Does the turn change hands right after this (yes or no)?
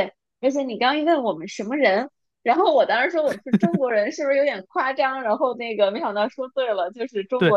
yes